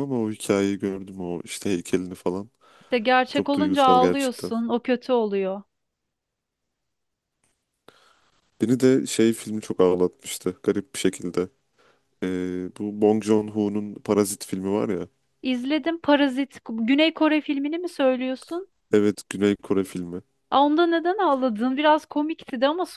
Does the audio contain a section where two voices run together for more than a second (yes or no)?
yes